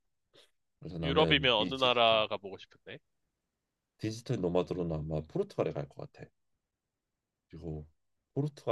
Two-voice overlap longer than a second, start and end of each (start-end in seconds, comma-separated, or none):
1.0-2.2